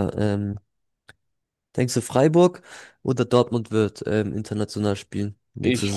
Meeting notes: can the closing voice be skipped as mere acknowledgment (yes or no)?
no